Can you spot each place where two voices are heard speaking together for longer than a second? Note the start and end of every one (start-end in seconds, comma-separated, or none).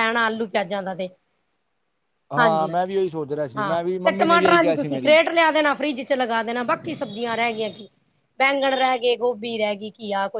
3.6-5.2